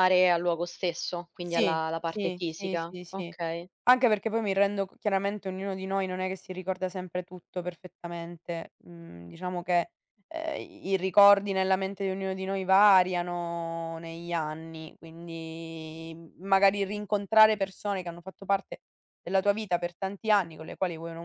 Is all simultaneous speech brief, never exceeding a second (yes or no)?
no